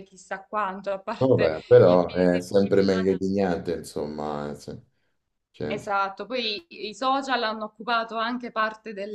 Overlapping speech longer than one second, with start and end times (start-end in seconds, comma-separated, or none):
1.2-3.2